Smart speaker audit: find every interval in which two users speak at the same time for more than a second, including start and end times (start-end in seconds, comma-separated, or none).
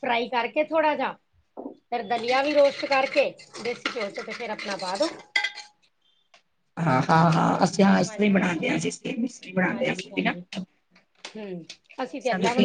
none